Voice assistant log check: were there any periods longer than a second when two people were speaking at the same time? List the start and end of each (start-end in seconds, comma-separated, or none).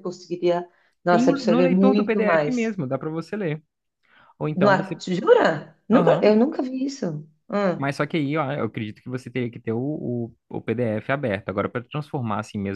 1.1-2.7